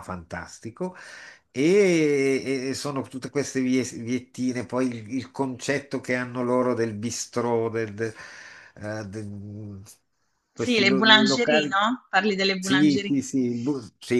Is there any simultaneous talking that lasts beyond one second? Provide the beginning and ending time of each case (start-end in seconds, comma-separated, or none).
10.6-11.9